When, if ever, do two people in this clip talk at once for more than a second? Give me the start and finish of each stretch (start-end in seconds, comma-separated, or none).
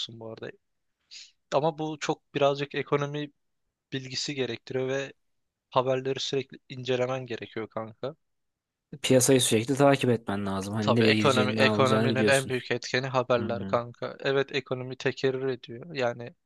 10.8-12.5